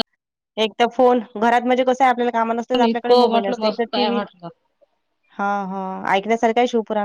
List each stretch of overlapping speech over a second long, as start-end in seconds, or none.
2.8-4.2